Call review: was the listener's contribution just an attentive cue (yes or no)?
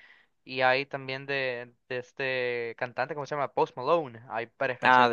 no